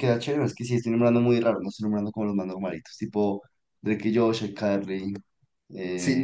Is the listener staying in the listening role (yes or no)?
no